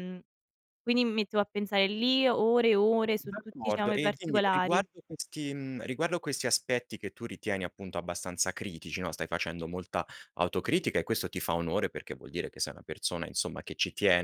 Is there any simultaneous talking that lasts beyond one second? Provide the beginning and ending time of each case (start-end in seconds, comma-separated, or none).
3.2-4.8